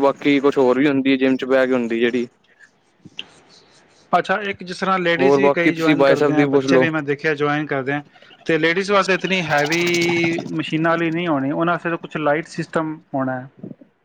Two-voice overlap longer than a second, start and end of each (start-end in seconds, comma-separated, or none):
5.2-6.8